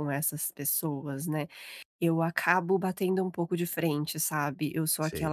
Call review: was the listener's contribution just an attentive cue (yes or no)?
yes